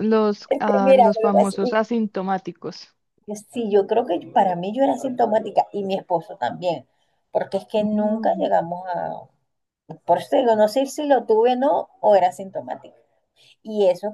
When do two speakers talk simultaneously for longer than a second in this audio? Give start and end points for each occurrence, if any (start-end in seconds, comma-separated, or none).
0.5-1.8